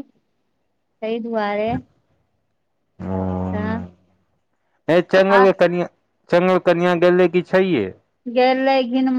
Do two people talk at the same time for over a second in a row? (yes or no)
no